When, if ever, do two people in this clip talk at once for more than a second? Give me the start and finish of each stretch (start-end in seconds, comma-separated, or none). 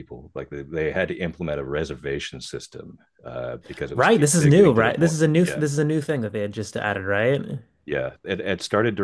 3.9-5.6